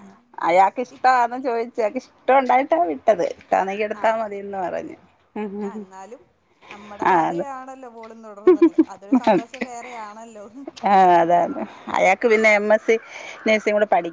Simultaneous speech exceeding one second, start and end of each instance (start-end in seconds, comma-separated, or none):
none